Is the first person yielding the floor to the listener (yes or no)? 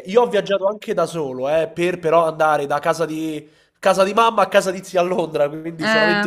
no